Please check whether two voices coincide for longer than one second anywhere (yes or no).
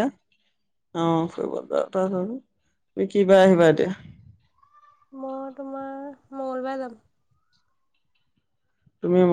no